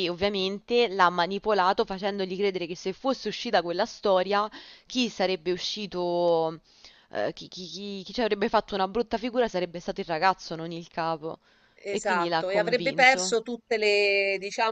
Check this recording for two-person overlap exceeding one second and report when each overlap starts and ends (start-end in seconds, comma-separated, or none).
11.9-13.4